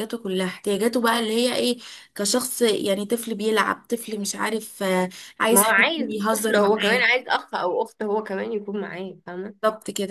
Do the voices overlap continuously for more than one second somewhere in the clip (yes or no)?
yes